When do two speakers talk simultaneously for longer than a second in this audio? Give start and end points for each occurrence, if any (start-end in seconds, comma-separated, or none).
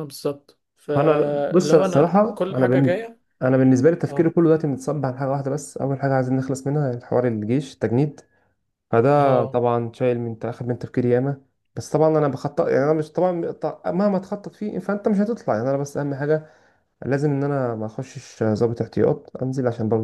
0.9-3.2